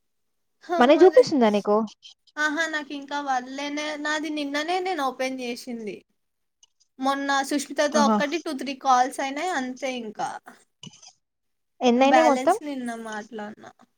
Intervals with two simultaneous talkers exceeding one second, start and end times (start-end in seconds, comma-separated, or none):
none